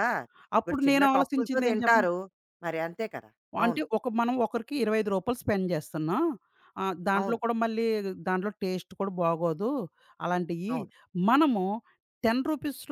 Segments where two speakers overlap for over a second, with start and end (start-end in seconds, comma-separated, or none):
0.6-2.1